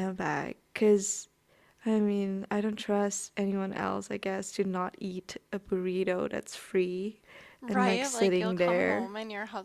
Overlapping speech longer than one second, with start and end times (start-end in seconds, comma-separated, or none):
7.7-9.1